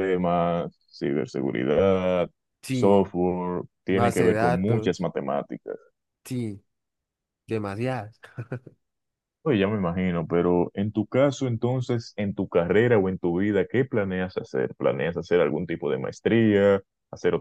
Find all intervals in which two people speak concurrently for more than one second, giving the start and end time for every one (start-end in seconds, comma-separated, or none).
3.9-5.1